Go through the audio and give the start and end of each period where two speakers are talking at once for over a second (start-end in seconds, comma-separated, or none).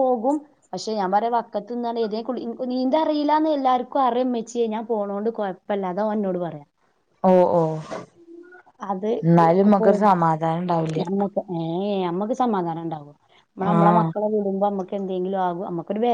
none